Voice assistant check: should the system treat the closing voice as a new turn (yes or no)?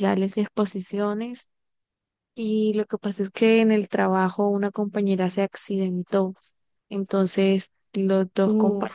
no